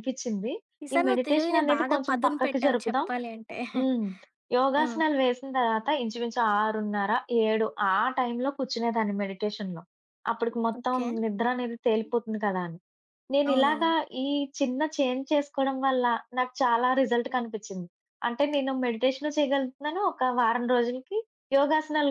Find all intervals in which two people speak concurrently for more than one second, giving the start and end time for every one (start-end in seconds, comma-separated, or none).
0.9-3.1